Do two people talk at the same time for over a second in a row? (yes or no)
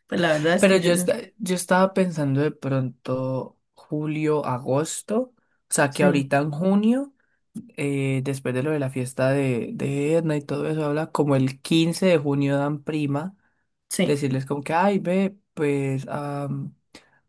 no